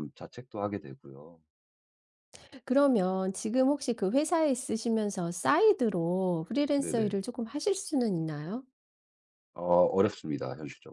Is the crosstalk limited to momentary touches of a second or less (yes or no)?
yes